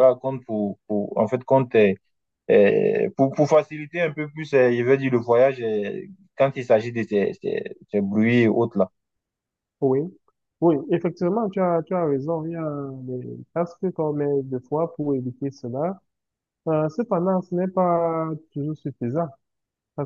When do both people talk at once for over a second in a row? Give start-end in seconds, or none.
none